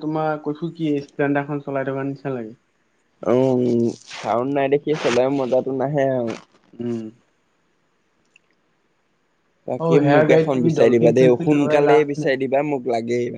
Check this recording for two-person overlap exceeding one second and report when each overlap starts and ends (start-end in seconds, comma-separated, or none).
9.8-12.3